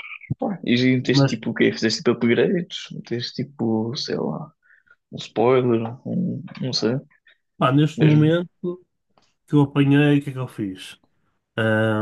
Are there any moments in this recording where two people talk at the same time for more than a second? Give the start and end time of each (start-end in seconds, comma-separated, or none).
none